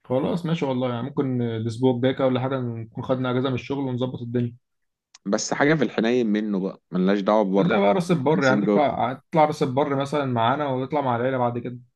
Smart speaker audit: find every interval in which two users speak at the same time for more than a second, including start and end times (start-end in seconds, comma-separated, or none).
7.6-9.0